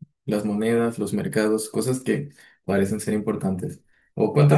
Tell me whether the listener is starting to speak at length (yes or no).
yes